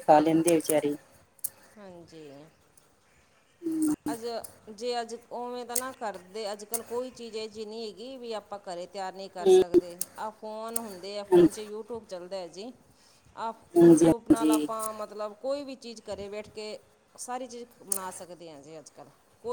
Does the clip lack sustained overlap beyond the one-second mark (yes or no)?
yes